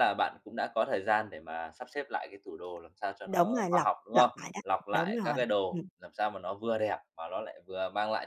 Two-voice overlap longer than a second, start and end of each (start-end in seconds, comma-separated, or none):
3.3-5.9